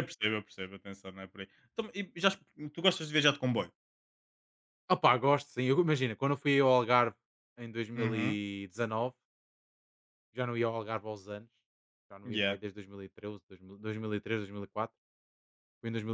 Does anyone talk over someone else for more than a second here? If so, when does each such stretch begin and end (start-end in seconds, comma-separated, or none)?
none